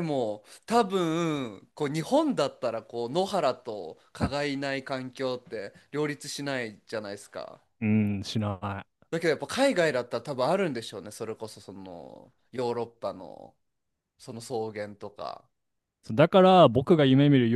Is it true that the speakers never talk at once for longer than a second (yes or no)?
yes